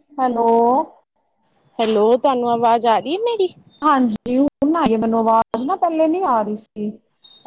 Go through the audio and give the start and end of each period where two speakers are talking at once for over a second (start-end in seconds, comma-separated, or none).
none